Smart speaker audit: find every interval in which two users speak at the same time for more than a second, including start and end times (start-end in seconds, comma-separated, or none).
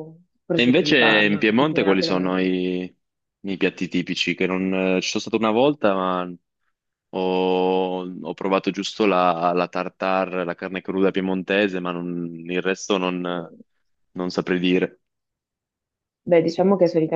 0.5-2.5